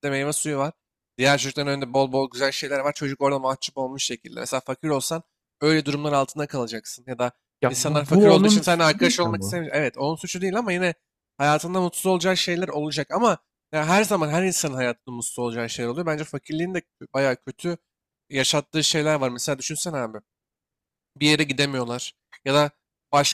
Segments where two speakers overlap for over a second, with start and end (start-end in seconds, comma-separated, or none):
7.7-9.7